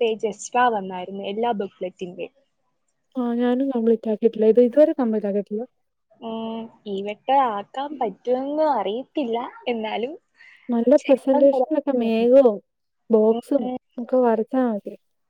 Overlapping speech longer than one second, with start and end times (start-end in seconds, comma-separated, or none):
11.0-12.3